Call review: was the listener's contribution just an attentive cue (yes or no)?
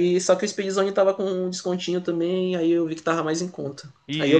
yes